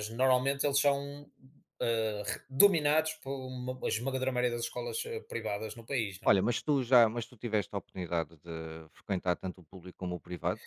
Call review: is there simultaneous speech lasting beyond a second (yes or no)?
no